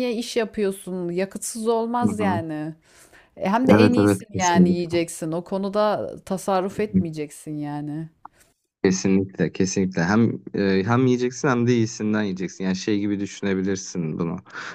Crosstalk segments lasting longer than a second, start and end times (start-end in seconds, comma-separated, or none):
3.7-5.0